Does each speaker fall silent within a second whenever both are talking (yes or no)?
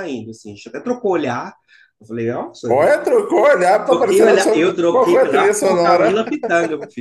no